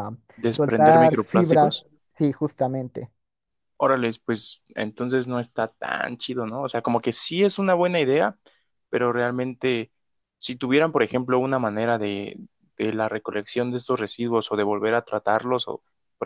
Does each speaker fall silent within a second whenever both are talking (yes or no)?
no